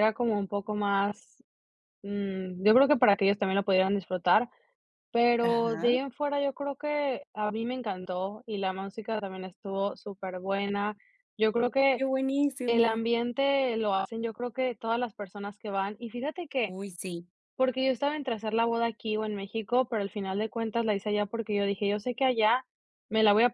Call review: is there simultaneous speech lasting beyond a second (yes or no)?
no